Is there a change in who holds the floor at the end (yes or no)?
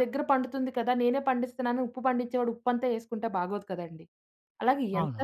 no